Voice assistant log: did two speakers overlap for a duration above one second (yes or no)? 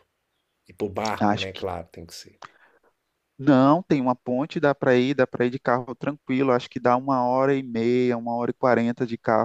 no